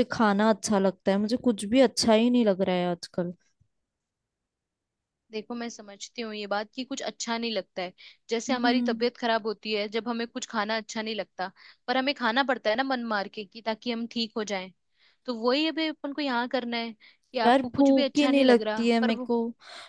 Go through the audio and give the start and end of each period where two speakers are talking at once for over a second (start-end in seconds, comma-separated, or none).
17.4-19.3